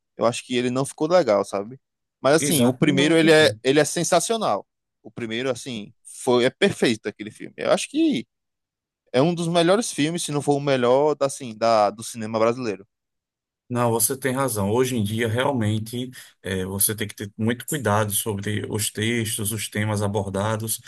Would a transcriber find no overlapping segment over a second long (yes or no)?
no